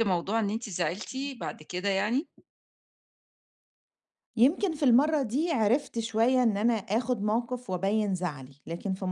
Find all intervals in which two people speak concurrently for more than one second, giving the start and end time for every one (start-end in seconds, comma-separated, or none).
none